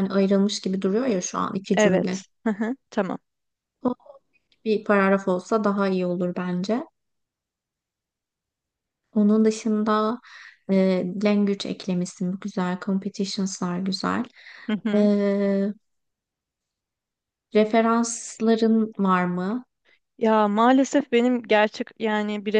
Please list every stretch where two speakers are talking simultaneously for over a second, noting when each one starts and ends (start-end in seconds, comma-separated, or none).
none